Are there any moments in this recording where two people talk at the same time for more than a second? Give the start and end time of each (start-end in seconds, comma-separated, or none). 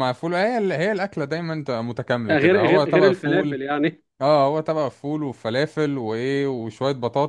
2.3-3.6